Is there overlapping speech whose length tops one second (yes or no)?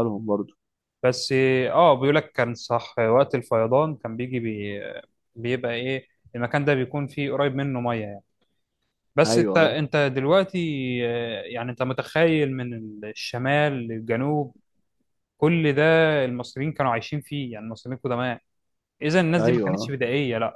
no